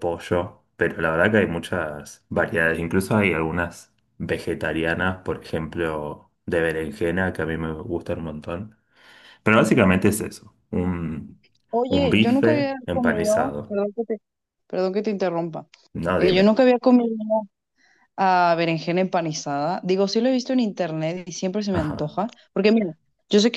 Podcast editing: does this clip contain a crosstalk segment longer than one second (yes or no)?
yes